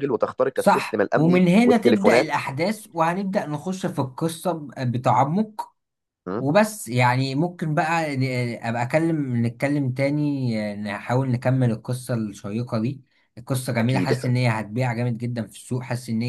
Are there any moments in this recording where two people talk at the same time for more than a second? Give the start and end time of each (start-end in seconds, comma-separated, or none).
0.5-2.4